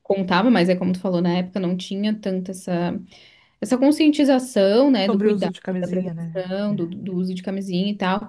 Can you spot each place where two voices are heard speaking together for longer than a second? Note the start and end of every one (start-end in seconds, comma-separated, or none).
5.0-6.8